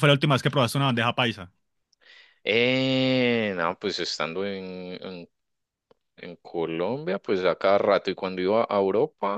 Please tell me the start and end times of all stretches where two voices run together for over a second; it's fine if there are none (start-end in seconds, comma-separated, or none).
none